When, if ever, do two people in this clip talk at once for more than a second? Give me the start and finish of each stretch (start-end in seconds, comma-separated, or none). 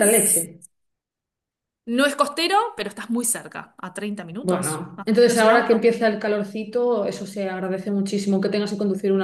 4.4-5.8